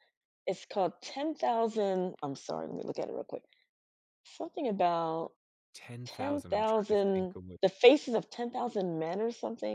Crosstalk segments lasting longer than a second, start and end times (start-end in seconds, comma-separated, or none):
6.0-7.6